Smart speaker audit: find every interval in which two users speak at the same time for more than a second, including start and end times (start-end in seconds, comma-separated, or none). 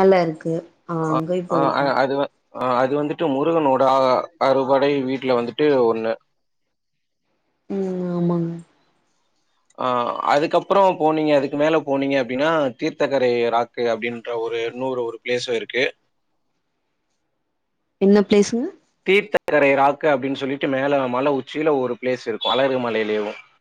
none